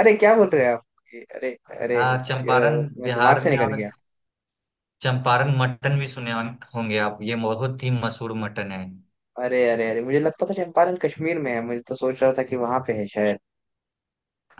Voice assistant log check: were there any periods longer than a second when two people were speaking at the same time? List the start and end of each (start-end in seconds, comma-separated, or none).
2.0-3.7